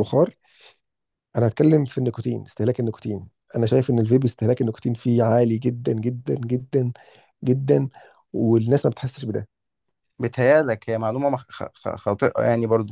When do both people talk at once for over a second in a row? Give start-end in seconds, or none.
none